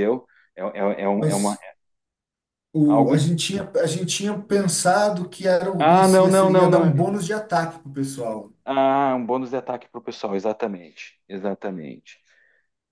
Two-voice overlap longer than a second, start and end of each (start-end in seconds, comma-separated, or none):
5.8-7.1